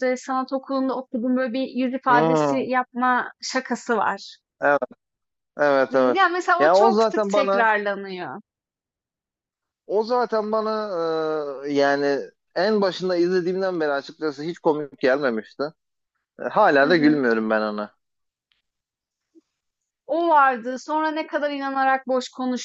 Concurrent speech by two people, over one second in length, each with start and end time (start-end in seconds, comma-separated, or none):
5.9-7.7